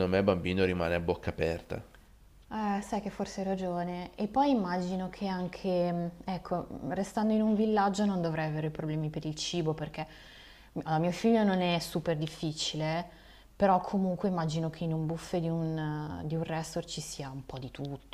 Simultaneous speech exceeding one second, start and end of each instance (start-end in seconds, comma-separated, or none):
none